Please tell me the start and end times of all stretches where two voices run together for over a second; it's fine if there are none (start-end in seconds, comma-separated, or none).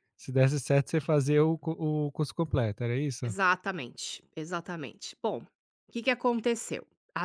none